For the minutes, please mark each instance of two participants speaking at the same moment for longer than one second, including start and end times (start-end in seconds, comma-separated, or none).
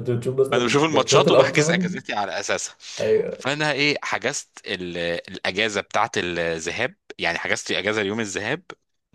0.5-1.9